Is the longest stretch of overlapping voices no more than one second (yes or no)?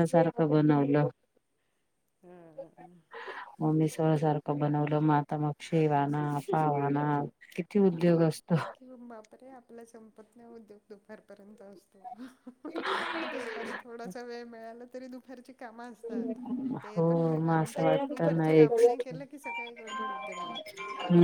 no